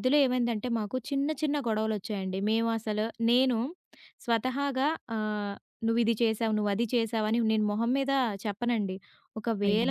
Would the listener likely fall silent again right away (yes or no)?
yes